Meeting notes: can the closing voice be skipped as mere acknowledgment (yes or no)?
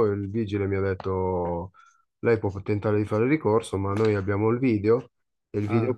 yes